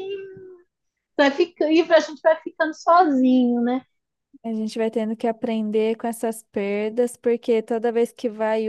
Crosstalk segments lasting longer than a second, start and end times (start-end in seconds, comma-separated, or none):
none